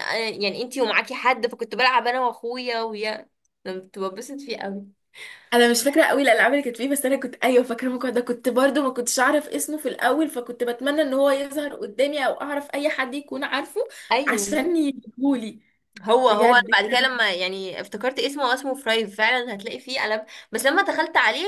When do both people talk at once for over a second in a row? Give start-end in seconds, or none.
none